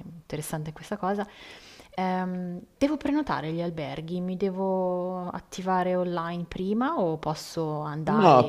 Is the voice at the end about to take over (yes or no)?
yes